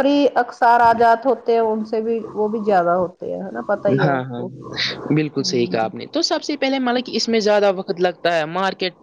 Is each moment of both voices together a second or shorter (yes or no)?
yes